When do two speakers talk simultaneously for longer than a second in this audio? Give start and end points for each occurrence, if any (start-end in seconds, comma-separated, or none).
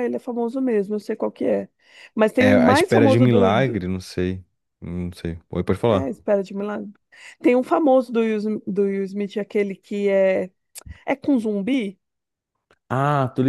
2.4-3.8